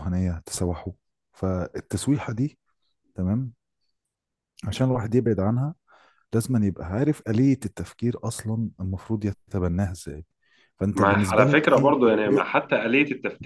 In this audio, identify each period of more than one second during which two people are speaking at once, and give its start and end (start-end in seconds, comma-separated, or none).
10.9-12.4